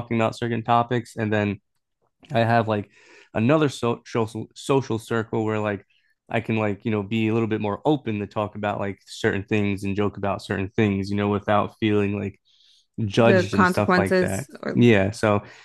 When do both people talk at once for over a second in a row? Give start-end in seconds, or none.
13.2-14.9